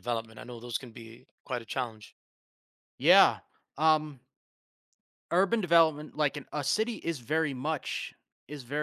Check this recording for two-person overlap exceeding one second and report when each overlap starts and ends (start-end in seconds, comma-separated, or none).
none